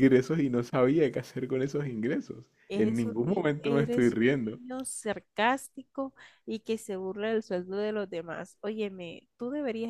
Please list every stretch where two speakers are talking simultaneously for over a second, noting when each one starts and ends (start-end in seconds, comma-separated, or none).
2.7-4.6